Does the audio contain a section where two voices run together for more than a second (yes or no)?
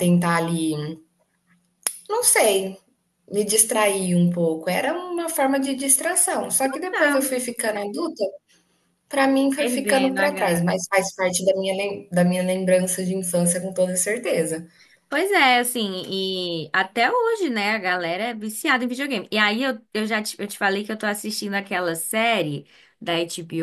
yes